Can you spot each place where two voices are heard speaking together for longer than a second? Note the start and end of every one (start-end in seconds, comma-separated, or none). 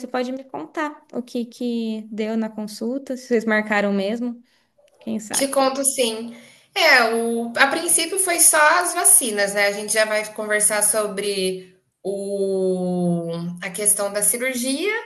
none